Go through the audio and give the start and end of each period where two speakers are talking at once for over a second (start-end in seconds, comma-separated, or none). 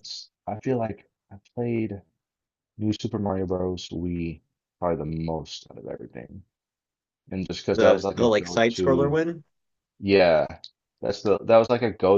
7.7-9.2